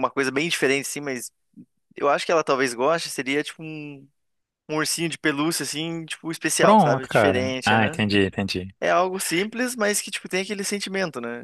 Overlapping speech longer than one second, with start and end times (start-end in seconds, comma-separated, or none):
6.6-8.0